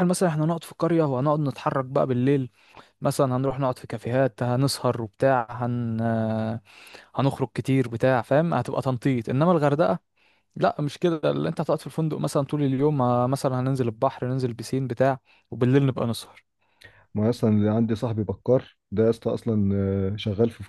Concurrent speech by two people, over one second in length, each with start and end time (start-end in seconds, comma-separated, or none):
none